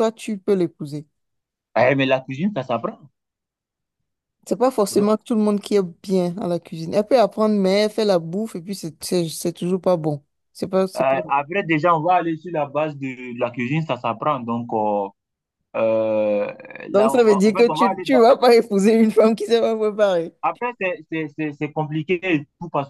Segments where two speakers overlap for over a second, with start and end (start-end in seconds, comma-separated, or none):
16.9-18.2